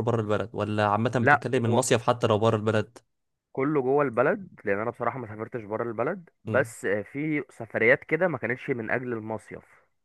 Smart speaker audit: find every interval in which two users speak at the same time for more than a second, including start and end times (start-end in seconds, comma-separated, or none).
none